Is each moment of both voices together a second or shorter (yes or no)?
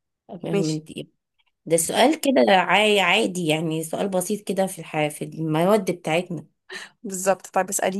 yes